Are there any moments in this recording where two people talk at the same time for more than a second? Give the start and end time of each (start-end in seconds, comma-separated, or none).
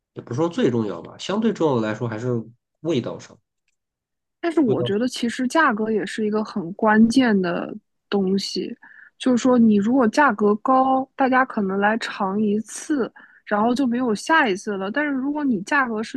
none